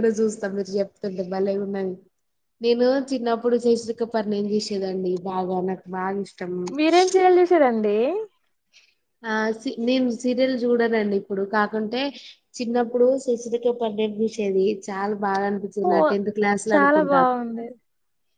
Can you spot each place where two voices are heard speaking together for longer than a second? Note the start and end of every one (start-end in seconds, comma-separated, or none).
none